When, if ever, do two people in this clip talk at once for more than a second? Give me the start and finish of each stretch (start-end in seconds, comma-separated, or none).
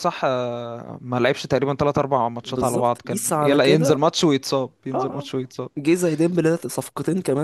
2.4-4.0